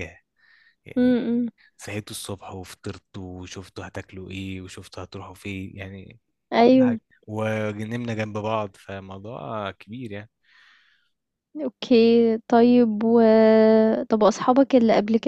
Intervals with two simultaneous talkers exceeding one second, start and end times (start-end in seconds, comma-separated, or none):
none